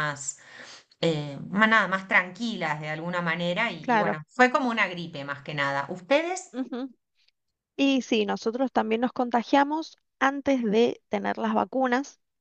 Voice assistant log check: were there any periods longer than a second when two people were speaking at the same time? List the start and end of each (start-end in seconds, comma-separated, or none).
none